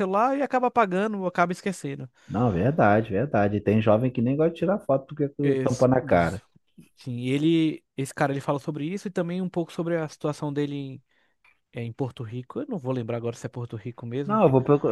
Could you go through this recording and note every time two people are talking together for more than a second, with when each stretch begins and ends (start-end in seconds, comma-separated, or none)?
none